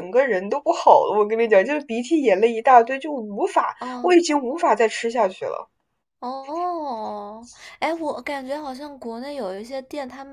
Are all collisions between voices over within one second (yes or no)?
yes